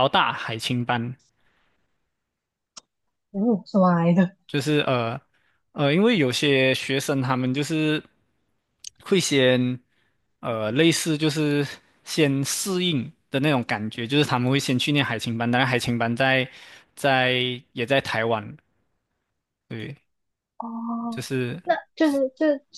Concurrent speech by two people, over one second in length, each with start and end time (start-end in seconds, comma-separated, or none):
none